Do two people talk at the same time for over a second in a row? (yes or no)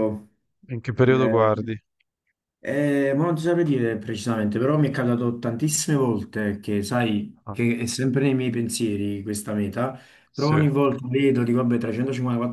no